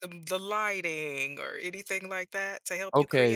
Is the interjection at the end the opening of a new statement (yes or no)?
yes